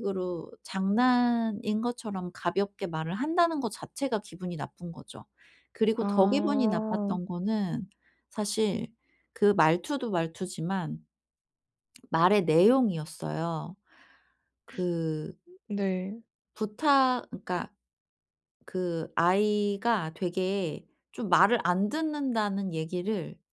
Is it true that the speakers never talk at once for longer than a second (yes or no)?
no